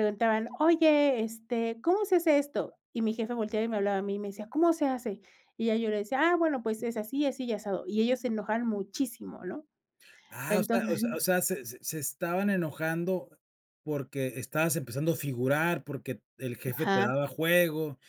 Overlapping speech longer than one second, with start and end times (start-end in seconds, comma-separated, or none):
none